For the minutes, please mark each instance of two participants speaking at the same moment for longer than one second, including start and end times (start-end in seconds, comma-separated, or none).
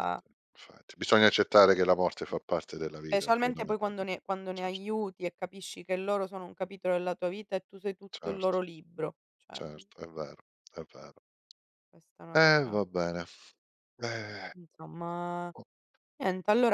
3.0-4.9